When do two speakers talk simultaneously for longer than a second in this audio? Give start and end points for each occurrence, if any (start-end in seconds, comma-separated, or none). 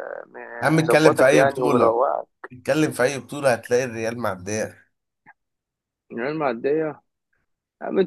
0.7-2.0